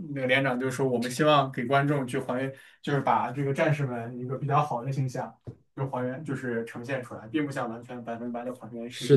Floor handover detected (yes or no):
yes